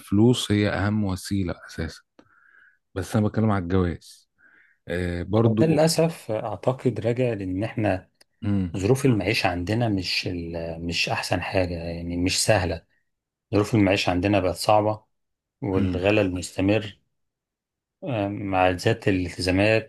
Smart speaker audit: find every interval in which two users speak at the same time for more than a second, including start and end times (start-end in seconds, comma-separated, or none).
none